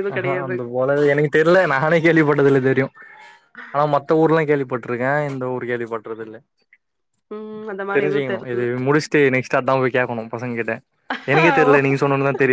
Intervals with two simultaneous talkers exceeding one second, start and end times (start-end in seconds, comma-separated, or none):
none